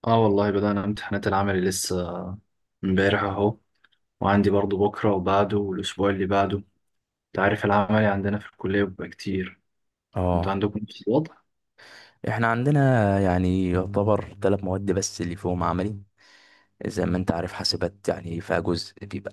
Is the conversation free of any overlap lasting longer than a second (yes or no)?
yes